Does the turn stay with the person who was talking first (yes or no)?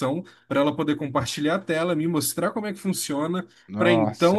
yes